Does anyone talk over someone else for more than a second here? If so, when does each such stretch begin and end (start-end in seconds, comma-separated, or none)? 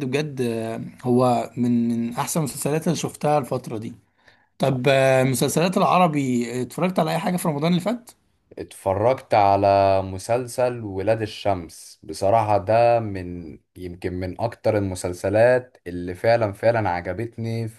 none